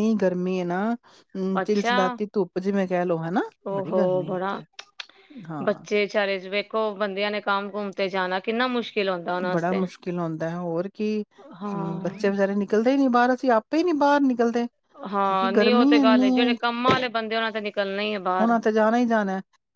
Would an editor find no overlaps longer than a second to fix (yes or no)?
no